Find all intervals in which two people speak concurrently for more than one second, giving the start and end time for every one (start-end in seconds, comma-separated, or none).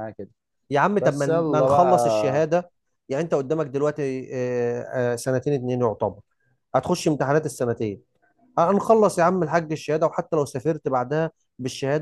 1.0-2.5